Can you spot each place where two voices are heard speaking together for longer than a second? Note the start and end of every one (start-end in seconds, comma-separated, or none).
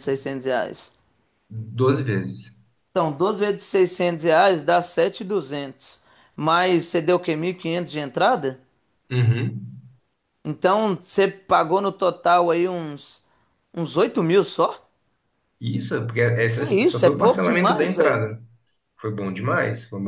16.6-18.2